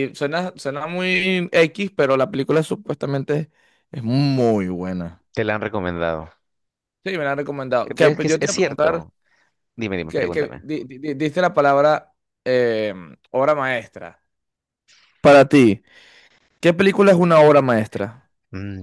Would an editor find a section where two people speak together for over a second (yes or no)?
yes